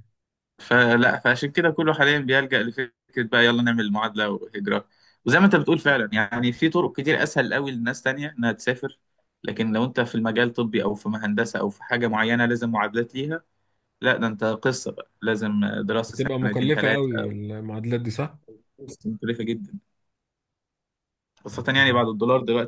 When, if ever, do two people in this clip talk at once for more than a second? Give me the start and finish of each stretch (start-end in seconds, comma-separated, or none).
16.0-17.3